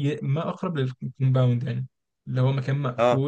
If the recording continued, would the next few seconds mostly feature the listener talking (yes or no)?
no